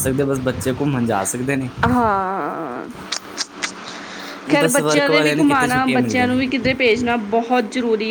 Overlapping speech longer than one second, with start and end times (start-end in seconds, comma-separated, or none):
4.6-6.4